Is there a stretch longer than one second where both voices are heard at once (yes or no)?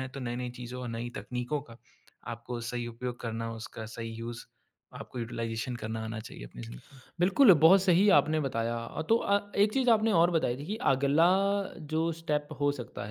no